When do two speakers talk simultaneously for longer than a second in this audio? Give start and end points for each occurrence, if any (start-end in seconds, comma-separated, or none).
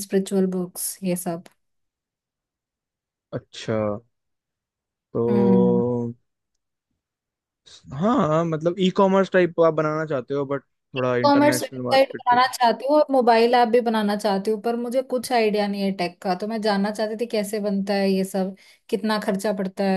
11.0-12.5